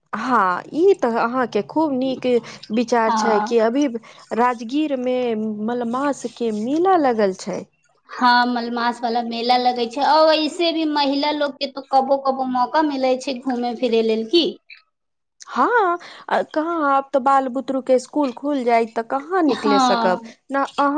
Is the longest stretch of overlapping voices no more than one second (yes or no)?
yes